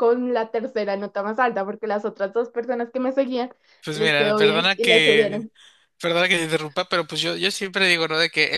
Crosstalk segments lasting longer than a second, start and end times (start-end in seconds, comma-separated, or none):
3.9-5.5